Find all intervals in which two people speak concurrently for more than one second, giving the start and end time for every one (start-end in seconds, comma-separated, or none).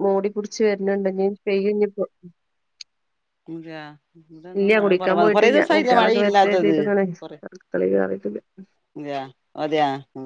4.8-6.8